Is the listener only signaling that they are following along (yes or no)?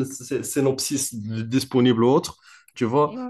no